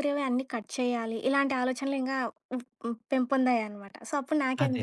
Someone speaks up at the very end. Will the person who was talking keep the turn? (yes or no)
no